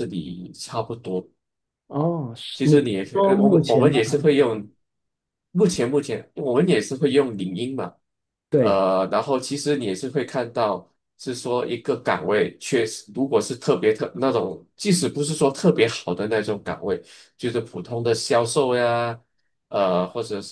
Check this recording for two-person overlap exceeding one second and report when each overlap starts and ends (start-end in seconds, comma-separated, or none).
2.5-4.0